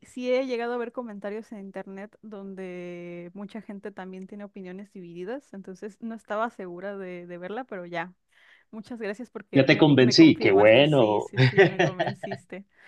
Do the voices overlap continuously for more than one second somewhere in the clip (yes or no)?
yes